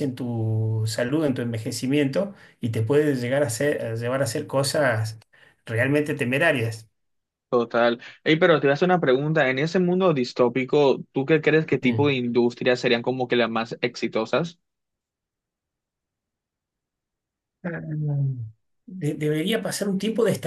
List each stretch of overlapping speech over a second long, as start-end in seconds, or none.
none